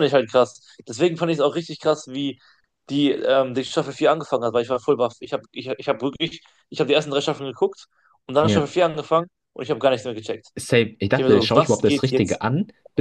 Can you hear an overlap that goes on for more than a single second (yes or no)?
yes